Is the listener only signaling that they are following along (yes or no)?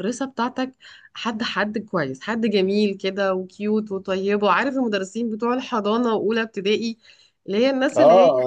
no